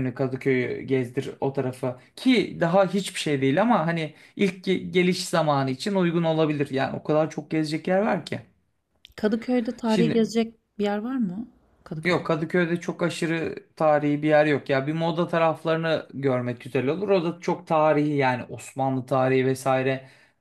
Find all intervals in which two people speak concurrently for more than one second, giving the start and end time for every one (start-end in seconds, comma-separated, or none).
none